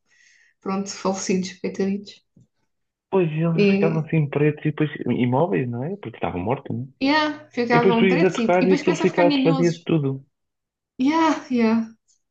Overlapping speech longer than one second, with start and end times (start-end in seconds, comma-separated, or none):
7.7-9.9